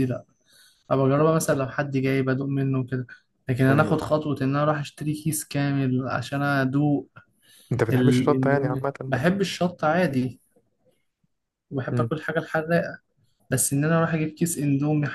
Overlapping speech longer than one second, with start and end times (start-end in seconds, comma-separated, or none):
7.9-9.2